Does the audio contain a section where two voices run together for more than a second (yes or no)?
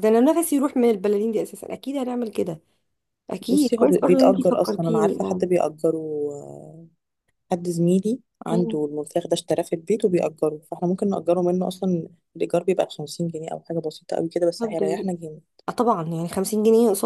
yes